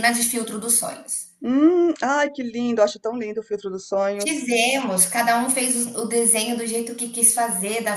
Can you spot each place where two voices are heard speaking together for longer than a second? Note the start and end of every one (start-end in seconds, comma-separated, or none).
none